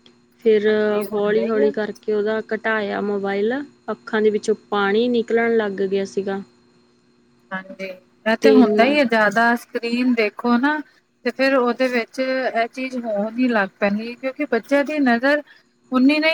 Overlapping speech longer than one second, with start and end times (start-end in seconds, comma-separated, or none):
none